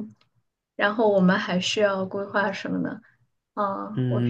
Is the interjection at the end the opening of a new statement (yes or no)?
yes